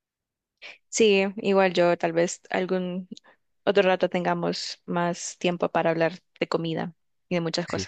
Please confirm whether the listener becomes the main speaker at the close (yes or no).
yes